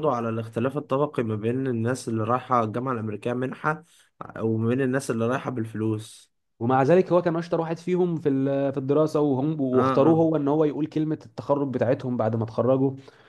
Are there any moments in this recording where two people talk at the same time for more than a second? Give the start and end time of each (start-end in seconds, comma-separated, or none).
none